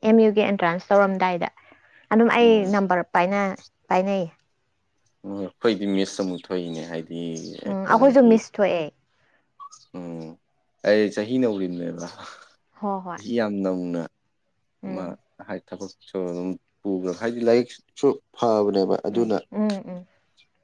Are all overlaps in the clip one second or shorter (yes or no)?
yes